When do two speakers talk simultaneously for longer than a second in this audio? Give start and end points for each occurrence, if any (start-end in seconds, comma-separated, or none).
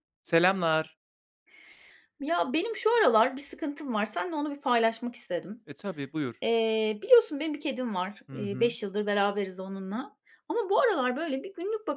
none